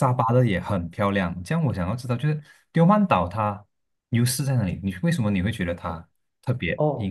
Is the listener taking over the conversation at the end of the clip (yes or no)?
yes